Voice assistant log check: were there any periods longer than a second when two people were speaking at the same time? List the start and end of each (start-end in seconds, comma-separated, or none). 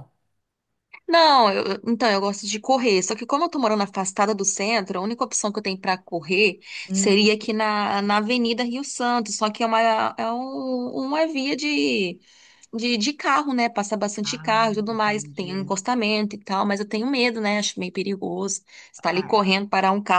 14.2-15.7